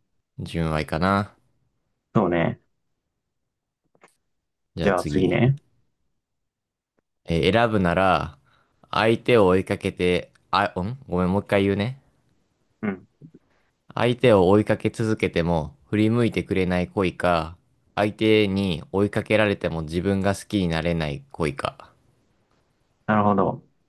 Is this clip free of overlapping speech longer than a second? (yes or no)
yes